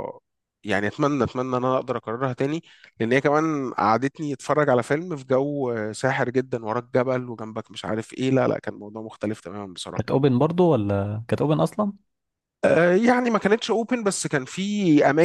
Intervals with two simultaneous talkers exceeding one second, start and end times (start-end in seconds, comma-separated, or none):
none